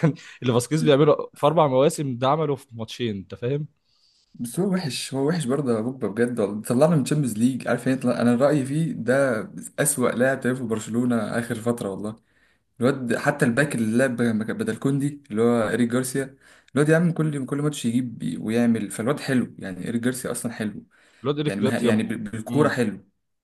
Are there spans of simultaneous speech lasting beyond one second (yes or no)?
yes